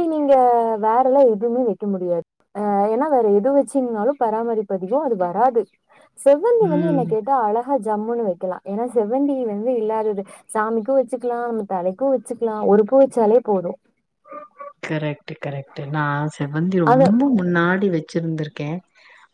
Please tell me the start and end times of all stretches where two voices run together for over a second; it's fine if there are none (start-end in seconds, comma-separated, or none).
none